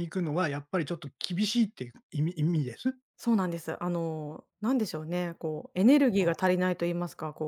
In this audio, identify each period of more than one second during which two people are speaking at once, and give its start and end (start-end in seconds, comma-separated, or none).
none